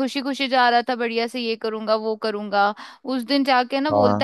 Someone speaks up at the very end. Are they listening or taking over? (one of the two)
listening